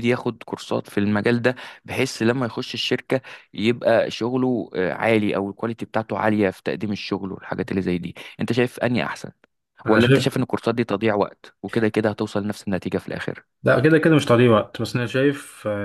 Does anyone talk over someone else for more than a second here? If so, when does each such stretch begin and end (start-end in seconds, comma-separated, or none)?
none